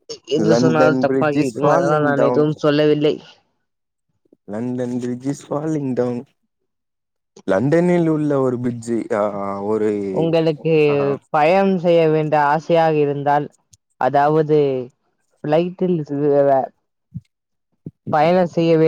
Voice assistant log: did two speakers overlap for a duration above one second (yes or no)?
yes